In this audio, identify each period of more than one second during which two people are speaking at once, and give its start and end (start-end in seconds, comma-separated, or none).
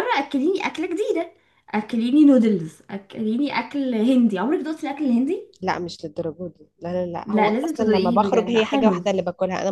7.2-9.0